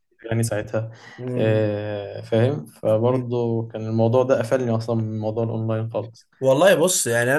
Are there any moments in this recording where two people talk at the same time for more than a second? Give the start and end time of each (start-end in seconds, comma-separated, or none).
none